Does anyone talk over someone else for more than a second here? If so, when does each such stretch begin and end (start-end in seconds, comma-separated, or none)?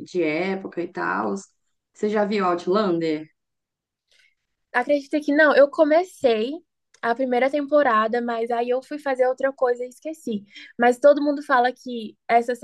none